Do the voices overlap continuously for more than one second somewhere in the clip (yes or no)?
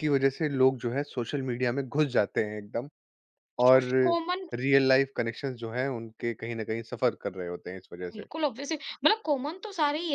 no